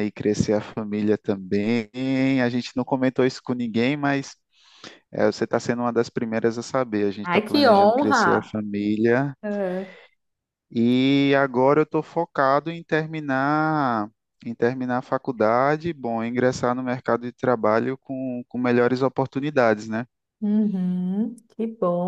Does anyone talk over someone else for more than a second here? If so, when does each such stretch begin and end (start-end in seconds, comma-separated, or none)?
7.2-8.6